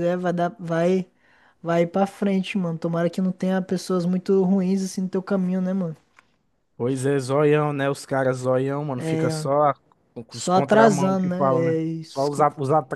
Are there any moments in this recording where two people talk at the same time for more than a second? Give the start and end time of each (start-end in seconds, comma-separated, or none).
10.3-12.3